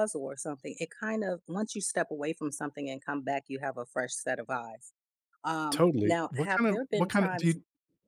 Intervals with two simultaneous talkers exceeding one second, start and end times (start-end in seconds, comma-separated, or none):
5.7-7.6